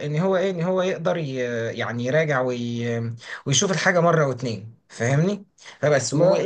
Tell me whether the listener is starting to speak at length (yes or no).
no